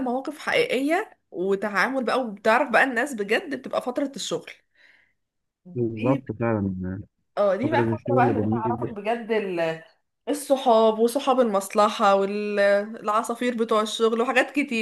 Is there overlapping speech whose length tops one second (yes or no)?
yes